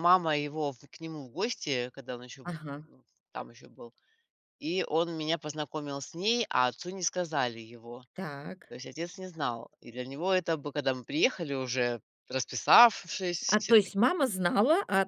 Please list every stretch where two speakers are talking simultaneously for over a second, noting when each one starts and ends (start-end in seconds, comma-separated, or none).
none